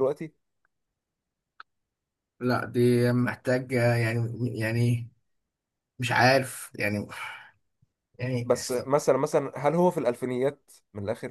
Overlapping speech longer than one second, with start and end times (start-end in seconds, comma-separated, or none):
none